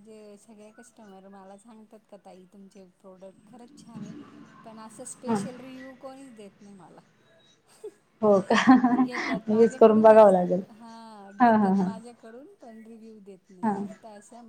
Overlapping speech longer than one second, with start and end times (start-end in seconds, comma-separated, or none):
9.0-10.3